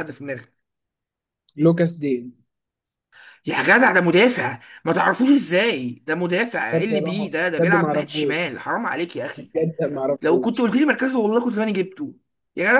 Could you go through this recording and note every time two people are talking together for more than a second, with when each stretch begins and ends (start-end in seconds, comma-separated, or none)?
6.7-8.5